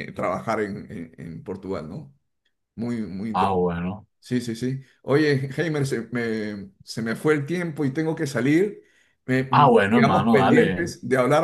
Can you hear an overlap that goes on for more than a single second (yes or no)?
yes